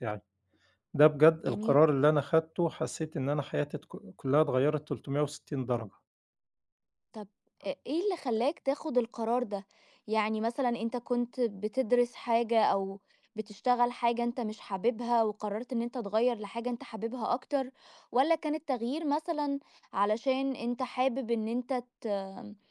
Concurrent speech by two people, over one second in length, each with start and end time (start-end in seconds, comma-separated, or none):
none